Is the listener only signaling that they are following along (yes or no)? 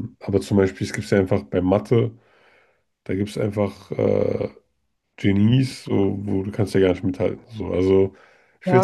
no